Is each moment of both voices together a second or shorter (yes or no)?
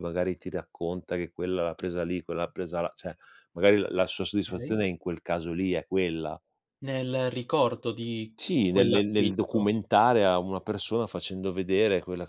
no